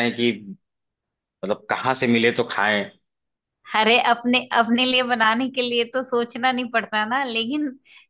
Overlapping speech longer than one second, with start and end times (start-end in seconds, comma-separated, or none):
none